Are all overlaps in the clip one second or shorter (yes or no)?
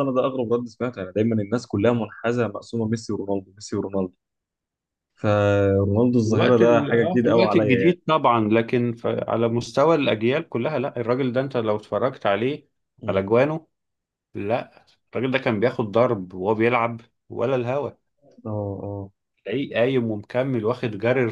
no